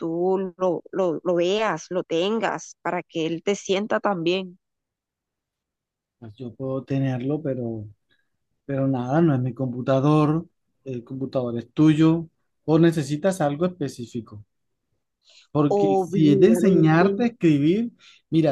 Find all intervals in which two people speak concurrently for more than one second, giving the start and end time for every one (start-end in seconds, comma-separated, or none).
15.7-17.1